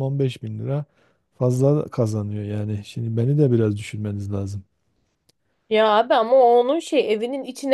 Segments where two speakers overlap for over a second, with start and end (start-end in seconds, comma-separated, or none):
none